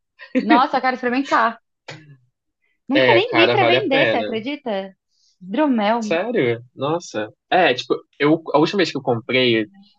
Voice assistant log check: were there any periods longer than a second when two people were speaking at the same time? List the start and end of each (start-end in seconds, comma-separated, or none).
2.9-4.4